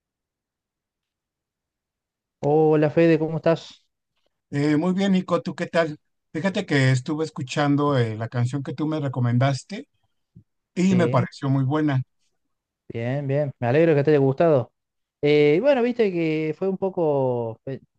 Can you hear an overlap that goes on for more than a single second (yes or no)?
no